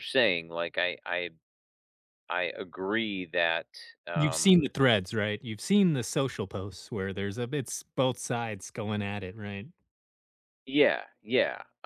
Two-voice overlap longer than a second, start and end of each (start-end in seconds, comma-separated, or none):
none